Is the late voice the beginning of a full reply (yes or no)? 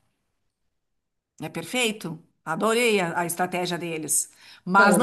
no